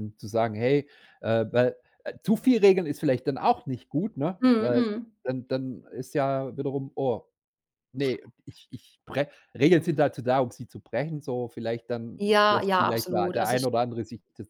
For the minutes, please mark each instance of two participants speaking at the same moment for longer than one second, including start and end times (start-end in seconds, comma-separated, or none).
12.2-13.7